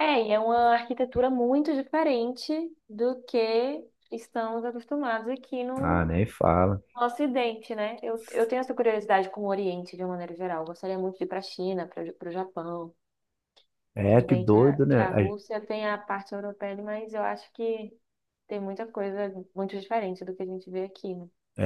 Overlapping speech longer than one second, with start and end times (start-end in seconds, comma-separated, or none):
14.1-15.3